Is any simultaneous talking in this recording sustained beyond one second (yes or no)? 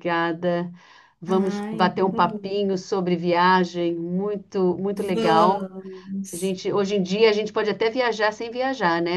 yes